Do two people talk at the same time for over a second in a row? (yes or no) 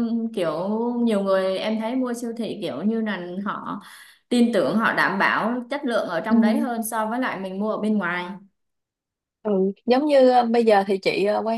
no